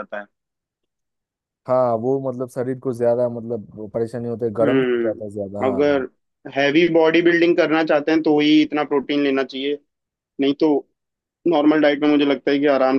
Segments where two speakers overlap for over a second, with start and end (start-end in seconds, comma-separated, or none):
4.6-5.8